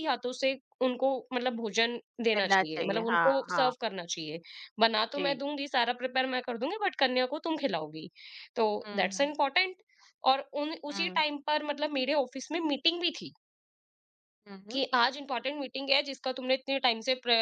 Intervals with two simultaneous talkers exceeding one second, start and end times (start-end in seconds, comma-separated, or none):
2.4-3.7